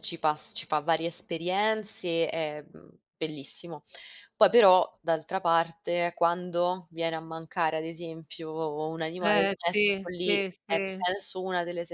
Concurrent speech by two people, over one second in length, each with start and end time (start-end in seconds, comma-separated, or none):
9.2-10.8